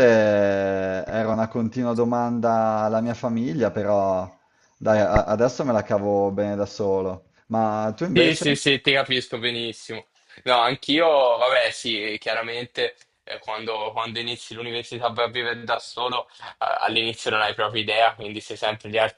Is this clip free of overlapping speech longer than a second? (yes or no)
yes